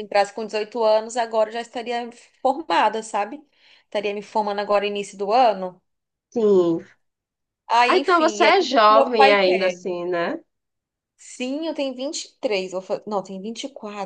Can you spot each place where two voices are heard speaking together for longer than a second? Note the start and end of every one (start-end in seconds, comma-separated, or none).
7.9-9.8